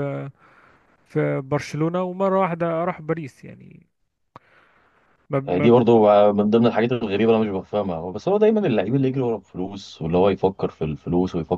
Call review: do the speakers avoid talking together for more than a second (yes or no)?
yes